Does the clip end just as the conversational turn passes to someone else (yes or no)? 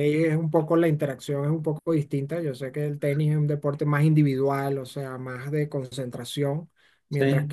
no